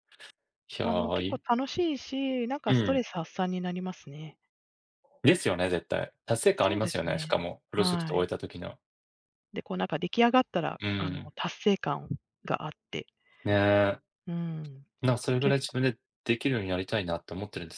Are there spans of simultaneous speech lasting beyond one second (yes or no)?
yes